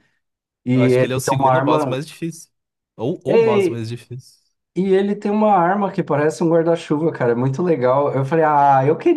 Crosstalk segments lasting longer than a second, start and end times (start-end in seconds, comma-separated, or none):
0.7-2.0